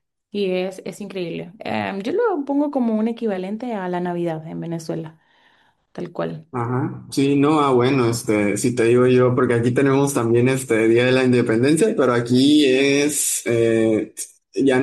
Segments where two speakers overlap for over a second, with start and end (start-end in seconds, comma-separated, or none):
none